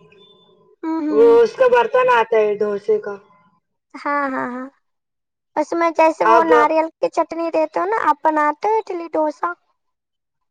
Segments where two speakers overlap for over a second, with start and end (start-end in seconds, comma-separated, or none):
none